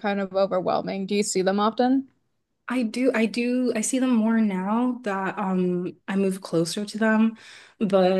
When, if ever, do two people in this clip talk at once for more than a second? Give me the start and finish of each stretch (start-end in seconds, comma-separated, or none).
none